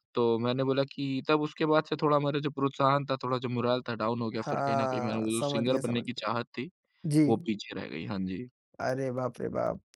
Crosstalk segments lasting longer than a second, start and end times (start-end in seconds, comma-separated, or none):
4.4-6.3